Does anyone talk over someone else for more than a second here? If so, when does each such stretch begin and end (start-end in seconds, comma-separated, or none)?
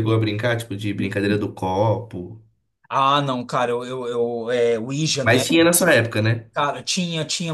none